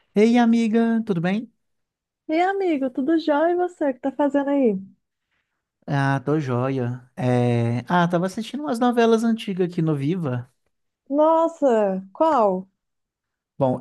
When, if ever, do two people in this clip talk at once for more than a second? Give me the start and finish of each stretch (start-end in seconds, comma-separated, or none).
none